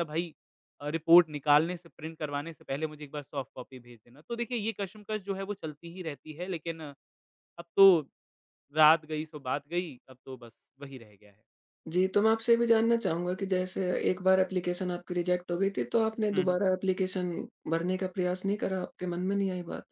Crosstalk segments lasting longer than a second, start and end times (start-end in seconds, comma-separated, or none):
none